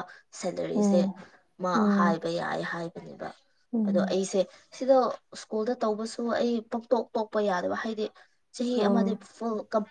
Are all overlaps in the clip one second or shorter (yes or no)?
yes